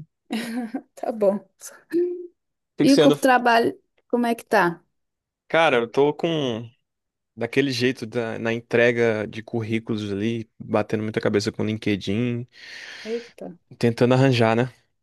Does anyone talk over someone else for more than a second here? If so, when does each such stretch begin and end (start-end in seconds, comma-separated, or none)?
none